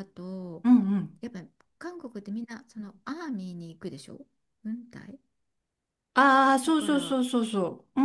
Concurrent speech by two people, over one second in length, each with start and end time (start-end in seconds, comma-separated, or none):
none